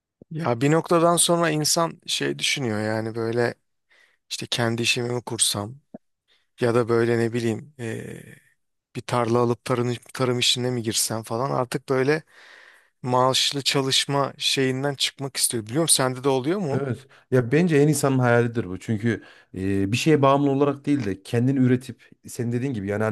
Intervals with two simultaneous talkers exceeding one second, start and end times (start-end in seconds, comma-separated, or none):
none